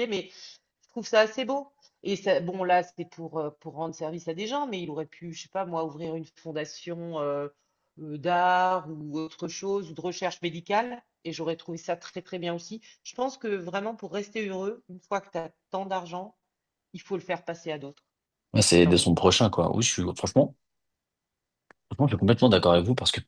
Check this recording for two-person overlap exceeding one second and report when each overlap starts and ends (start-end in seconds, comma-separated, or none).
none